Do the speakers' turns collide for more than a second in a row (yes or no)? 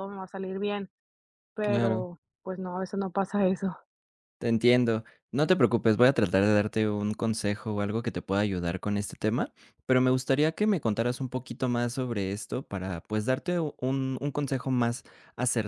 no